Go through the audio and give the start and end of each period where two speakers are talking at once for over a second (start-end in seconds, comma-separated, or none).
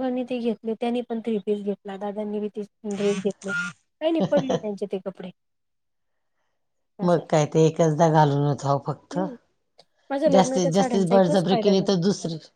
none